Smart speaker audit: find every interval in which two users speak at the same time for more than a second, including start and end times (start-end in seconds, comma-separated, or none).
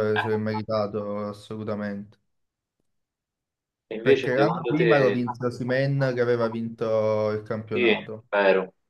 4.0-5.2